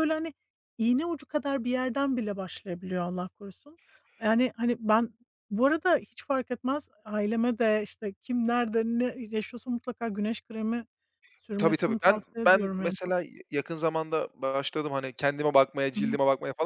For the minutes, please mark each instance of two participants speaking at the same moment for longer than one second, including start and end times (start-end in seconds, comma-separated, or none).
11.6-13.1